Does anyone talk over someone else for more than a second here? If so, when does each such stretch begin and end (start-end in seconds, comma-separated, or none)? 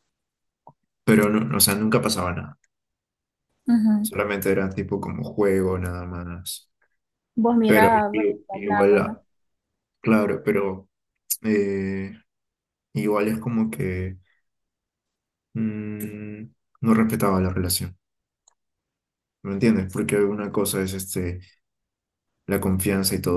7.7-9.2